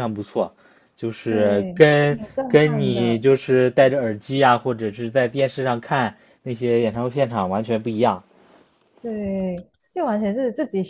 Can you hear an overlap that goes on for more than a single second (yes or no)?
yes